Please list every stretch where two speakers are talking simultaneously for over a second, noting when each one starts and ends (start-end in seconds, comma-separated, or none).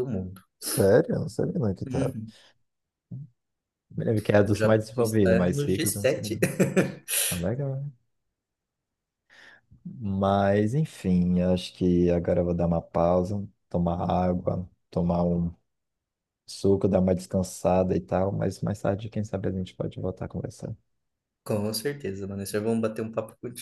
4.5-6.2